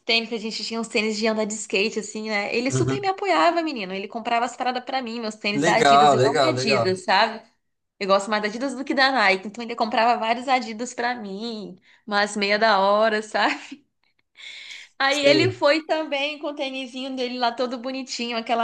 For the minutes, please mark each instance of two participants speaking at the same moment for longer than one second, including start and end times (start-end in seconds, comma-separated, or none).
5.5-6.9